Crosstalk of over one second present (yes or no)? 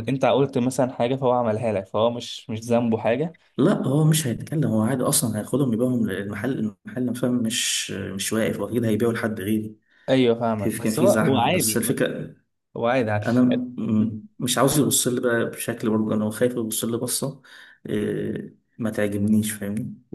yes